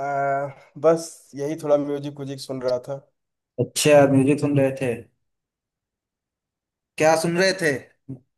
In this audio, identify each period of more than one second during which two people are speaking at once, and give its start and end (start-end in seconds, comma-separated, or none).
none